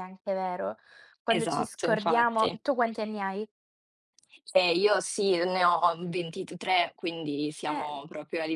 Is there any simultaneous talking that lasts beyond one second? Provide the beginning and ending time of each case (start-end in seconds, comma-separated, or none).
1.3-2.5